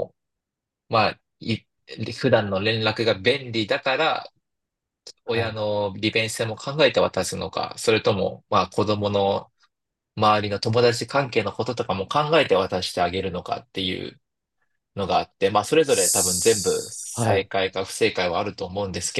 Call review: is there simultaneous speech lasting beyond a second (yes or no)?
yes